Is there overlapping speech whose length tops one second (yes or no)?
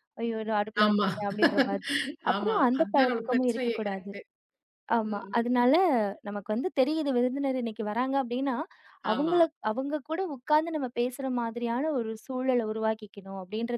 yes